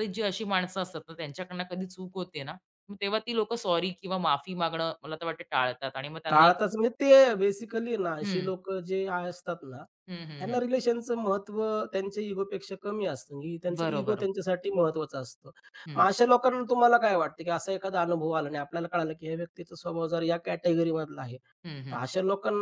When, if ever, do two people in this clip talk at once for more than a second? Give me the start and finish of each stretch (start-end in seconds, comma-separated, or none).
none